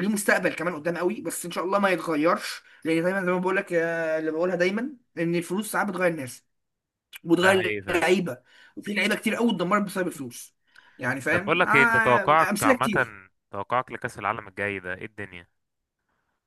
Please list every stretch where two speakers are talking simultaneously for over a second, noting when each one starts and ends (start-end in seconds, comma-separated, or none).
11.3-13.1